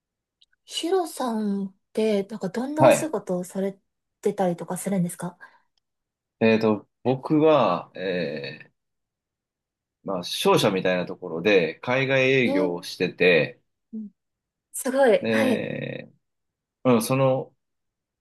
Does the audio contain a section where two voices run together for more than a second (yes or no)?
no